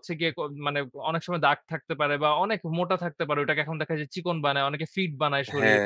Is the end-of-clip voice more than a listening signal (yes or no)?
yes